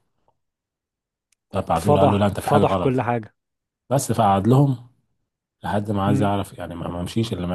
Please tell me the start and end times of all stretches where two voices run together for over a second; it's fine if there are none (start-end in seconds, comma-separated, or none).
1.8-3.1